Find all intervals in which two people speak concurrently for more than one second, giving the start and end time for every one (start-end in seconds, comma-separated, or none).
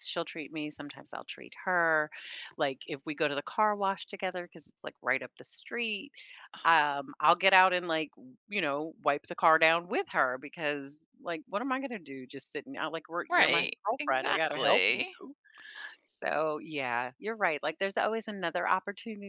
13.3-15.1